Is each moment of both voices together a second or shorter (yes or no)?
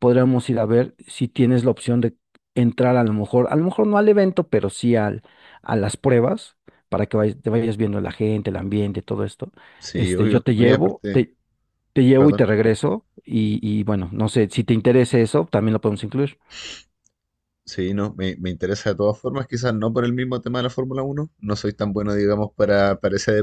no